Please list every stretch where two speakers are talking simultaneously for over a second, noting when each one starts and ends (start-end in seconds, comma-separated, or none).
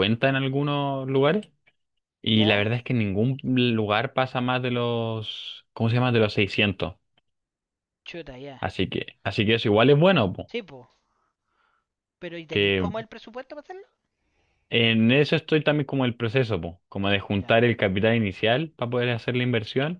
none